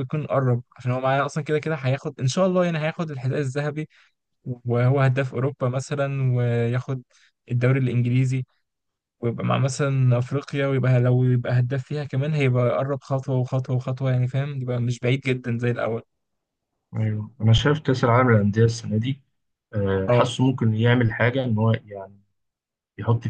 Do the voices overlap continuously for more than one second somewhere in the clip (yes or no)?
no